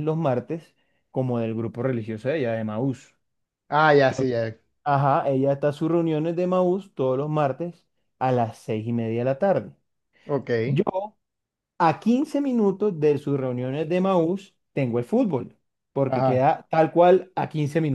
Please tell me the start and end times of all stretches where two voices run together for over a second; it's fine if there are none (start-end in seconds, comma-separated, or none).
none